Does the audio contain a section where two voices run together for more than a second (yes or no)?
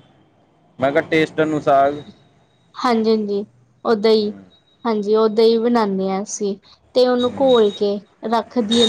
no